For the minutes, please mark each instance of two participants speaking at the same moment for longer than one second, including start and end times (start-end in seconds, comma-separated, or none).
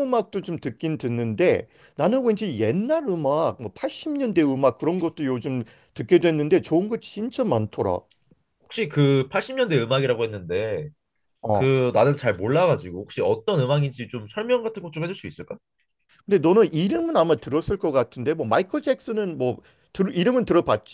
none